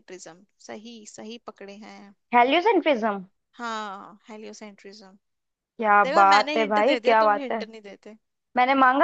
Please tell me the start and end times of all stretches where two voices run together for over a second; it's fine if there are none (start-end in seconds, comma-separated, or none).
6.0-7.6